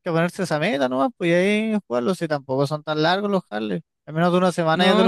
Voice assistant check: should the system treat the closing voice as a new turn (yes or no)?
yes